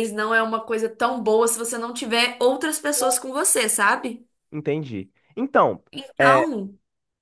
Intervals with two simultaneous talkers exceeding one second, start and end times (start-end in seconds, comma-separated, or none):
none